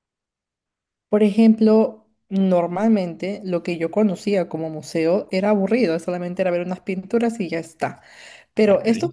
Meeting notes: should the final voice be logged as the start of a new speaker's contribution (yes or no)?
no